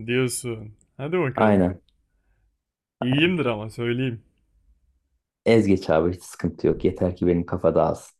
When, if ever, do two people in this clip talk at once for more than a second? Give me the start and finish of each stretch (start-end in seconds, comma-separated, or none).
none